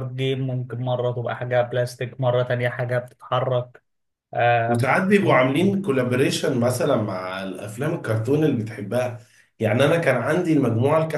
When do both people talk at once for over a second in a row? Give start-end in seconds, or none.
none